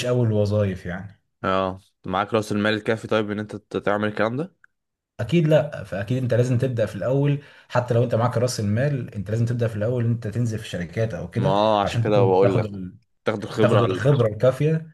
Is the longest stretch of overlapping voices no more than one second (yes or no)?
no